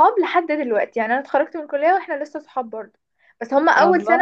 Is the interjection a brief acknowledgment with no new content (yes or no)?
yes